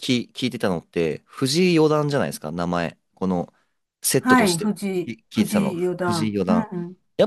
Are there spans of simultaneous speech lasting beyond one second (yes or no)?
yes